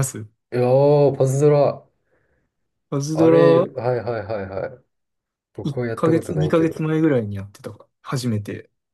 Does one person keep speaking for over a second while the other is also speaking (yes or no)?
yes